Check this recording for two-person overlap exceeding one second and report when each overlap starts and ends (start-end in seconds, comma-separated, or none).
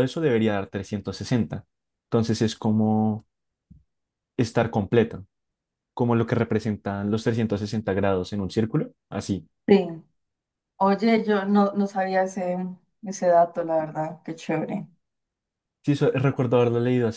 none